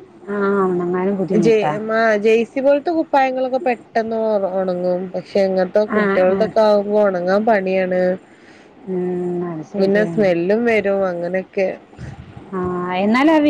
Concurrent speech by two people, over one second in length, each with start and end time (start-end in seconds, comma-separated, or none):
none